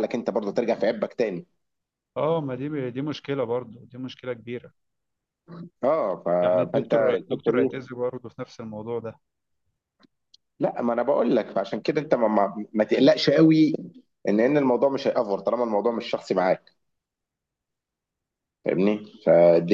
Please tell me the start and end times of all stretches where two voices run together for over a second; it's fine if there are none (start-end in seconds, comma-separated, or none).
6.4-7.7